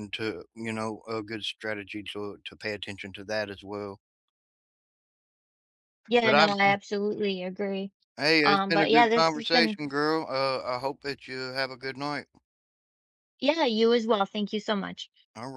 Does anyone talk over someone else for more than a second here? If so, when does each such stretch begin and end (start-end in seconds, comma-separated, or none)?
8.4-9.8